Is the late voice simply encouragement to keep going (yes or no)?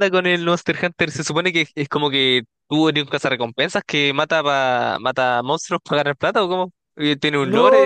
no